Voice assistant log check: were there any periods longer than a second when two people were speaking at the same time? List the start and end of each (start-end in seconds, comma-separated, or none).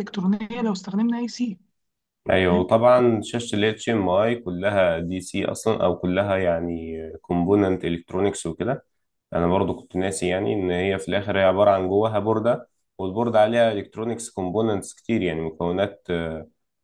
none